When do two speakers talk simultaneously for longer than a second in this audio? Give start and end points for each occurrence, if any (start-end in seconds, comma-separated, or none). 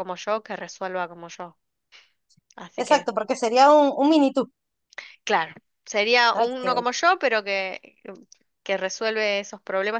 none